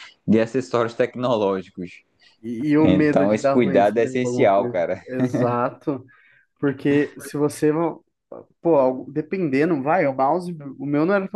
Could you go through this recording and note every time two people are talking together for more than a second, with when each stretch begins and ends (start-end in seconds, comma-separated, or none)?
2.8-5.0